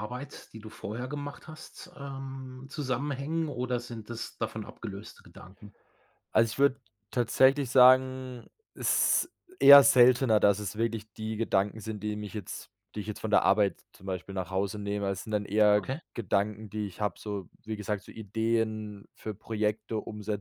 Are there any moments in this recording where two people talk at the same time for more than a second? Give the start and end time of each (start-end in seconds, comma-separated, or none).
none